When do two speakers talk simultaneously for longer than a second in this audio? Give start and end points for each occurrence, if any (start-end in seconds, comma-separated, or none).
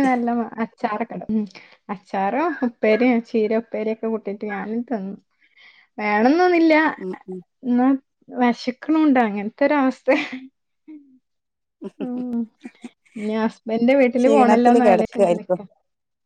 14.2-15.6